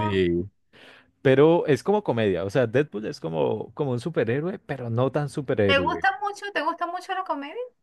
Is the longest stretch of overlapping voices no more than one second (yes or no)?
yes